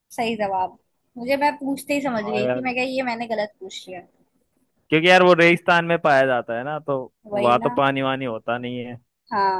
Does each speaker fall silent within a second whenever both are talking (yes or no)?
yes